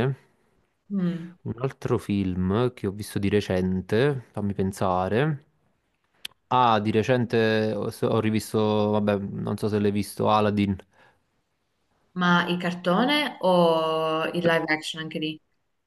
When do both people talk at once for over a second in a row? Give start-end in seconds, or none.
none